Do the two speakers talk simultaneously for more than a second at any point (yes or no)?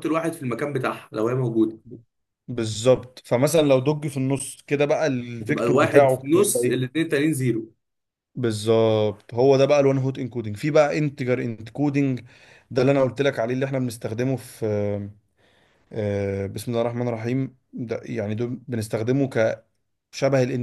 yes